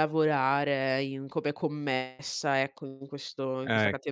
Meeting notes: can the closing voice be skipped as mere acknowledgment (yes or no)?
yes